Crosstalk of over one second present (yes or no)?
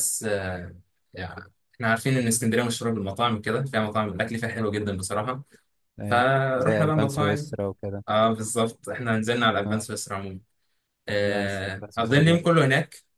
yes